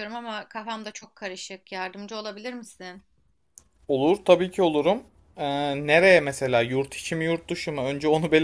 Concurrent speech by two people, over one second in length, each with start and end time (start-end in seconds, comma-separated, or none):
none